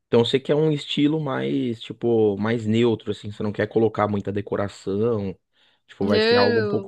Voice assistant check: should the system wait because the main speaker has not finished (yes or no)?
no